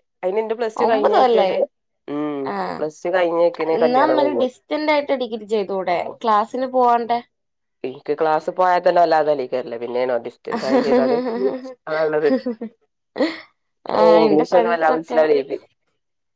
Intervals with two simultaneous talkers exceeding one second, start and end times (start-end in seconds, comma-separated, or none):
none